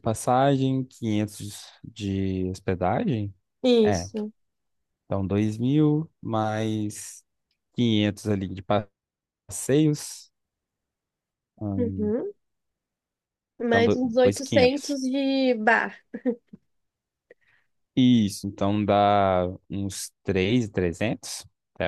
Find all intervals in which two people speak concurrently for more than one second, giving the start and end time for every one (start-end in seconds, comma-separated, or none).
13.7-14.9